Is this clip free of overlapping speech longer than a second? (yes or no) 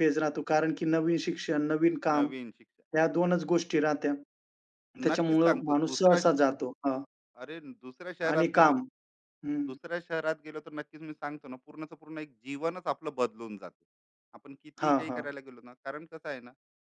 no